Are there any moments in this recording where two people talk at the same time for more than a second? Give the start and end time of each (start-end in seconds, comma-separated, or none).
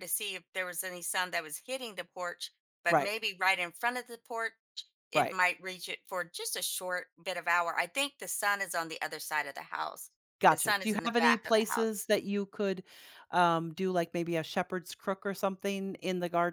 10.5-12.1